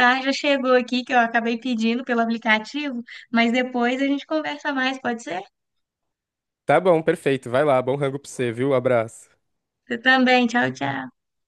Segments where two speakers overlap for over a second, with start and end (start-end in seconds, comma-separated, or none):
none